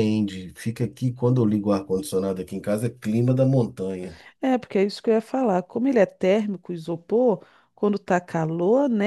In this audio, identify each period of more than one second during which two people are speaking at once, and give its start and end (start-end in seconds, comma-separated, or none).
none